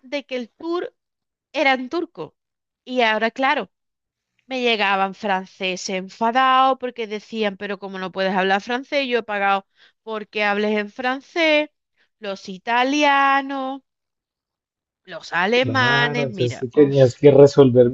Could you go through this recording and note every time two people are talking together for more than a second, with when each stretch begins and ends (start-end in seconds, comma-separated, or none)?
15.5-17.1